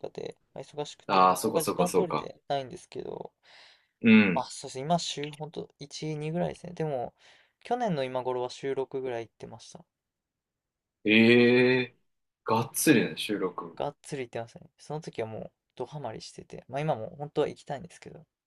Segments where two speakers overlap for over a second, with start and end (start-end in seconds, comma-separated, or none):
1.1-2.3